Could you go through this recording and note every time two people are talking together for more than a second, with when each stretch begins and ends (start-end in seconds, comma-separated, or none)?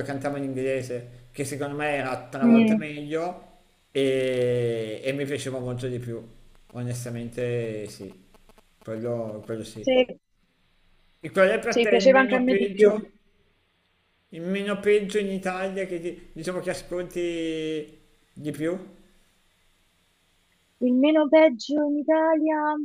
11.7-13.0